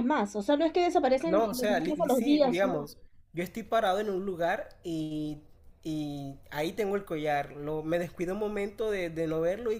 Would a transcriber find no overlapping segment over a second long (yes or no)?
no